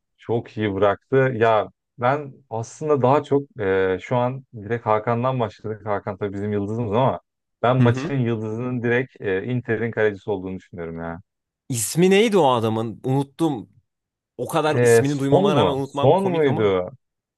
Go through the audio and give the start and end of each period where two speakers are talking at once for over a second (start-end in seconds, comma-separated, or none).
14.7-16.8